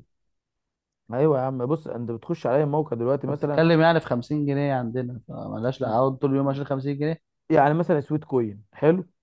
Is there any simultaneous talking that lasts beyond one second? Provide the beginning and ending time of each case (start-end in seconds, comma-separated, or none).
none